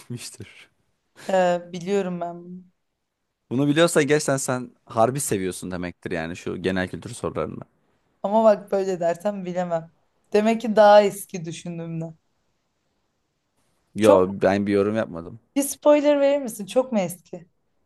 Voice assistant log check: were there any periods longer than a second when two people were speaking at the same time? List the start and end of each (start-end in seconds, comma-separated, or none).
none